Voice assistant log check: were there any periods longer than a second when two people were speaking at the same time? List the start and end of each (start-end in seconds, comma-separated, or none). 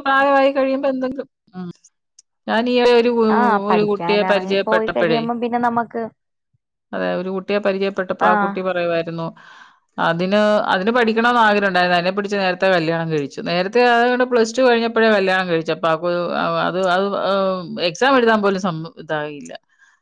3.7-5.2